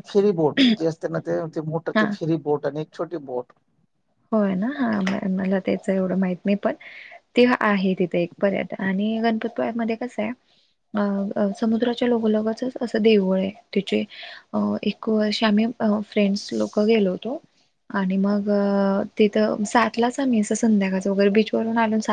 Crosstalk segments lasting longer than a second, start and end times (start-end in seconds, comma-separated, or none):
none